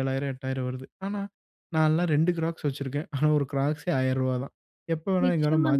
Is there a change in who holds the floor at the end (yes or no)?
yes